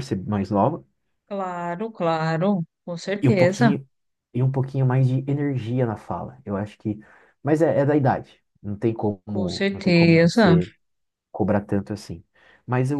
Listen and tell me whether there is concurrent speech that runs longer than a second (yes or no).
yes